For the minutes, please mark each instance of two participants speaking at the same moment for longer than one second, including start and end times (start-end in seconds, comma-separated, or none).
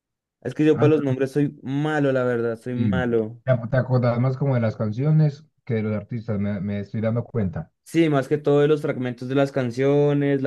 none